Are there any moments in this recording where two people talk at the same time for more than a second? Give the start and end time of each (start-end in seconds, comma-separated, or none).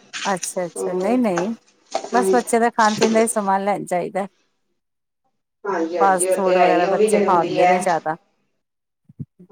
6.3-7.8